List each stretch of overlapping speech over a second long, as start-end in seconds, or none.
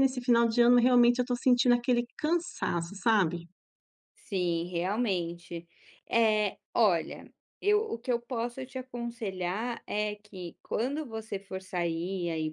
none